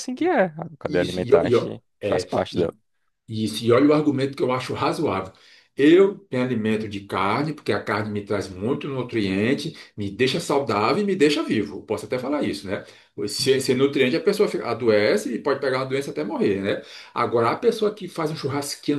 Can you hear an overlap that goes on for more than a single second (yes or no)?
yes